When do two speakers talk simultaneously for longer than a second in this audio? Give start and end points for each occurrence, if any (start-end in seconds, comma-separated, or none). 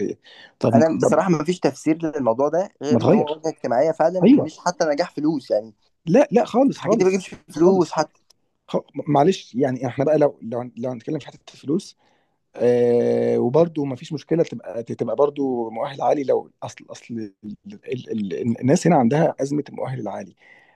6.7-8.0